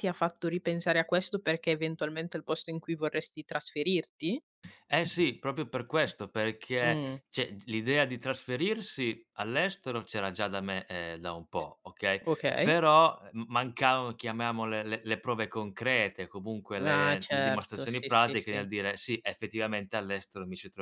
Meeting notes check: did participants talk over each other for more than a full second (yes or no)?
yes